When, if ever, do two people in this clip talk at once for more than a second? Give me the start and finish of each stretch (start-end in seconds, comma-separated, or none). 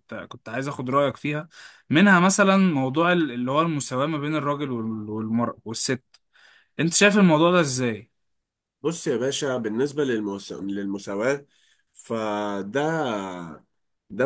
none